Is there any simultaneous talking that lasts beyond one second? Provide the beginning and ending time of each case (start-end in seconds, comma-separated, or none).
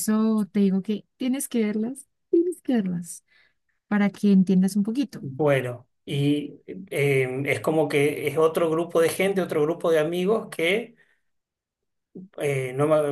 none